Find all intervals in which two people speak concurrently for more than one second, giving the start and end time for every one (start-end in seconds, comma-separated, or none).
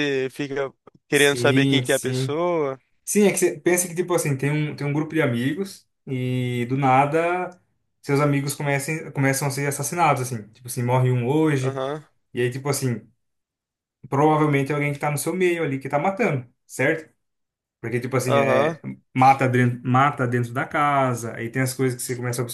1.1-2.4